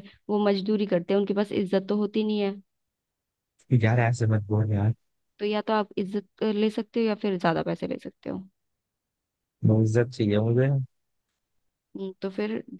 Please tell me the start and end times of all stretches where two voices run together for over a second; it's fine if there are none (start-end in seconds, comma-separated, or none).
none